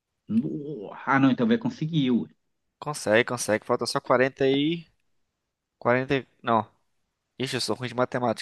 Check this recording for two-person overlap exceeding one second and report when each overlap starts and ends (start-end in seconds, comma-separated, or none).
none